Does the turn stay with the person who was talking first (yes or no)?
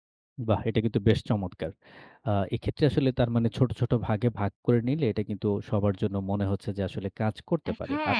no